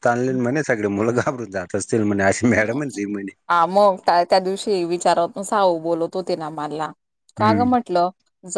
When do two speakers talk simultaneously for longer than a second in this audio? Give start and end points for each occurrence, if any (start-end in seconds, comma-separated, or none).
none